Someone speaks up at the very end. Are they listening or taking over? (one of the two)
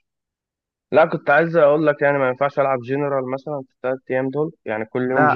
taking over